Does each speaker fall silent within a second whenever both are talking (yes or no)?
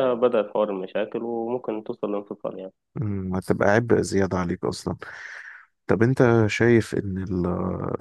yes